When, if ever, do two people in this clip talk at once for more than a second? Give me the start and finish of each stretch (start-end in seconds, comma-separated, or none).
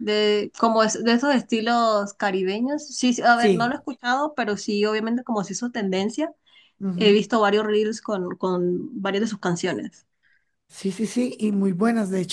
none